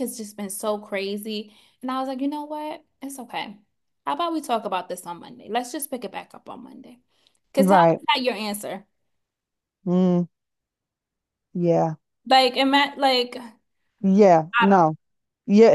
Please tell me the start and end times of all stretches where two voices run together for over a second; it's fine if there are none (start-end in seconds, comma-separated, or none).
none